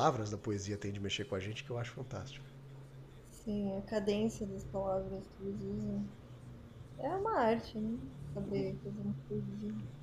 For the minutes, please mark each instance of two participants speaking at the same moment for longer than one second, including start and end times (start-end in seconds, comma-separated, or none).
none